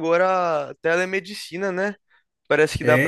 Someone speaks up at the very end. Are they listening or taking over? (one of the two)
listening